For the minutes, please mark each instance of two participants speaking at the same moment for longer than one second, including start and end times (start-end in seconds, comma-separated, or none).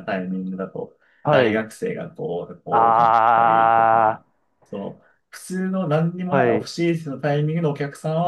2.7-4.2